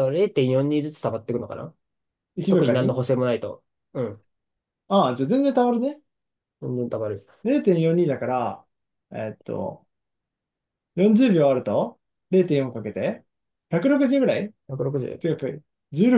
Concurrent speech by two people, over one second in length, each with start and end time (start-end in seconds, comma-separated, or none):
none